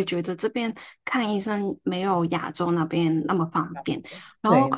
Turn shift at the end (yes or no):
no